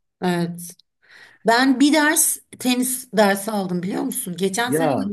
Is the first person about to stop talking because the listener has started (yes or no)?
no